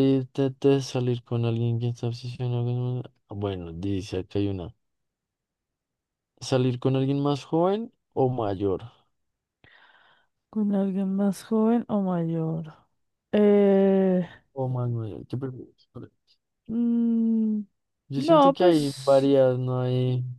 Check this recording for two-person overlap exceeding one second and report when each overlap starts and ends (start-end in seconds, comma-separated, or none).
18.1-19.3